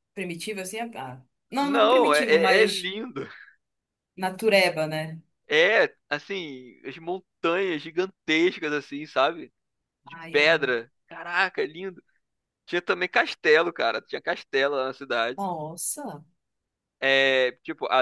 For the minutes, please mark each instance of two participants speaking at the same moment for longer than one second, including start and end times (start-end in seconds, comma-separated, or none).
1.6-2.9